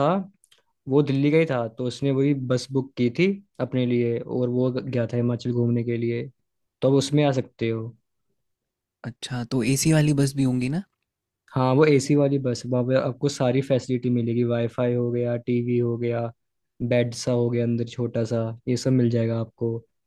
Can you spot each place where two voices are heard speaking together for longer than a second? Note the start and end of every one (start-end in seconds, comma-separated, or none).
none